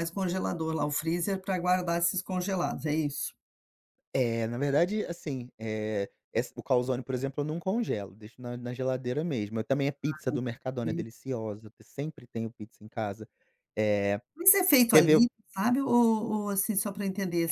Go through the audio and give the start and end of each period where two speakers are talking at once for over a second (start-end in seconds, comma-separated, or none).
none